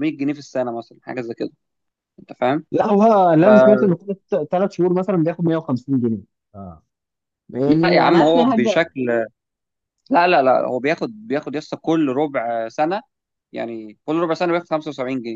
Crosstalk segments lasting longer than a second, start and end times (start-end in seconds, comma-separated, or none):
7.7-8.9